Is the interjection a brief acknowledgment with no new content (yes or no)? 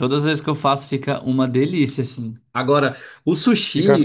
yes